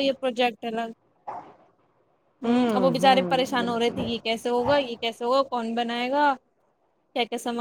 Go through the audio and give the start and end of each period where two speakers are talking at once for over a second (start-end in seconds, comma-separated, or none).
2.4-4.0